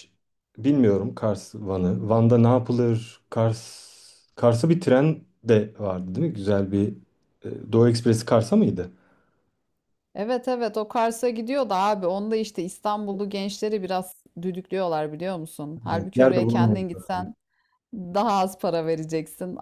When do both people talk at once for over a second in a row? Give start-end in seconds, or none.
15.9-17.3